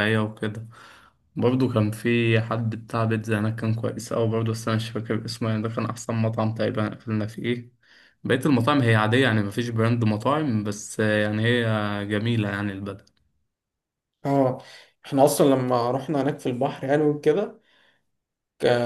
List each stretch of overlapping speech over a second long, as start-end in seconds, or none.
none